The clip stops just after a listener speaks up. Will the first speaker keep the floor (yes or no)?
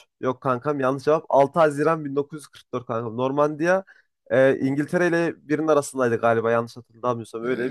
no